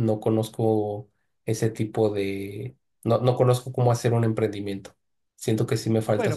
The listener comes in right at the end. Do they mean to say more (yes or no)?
yes